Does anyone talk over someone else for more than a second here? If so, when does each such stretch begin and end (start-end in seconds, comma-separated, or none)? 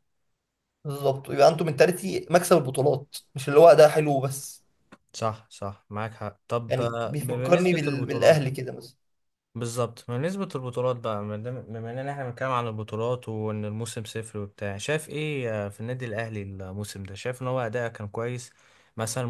6.7-8.4